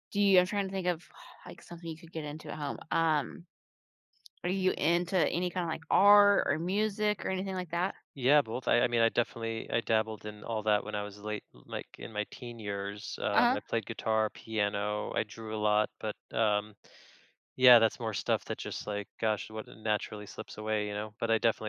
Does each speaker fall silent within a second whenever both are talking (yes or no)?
yes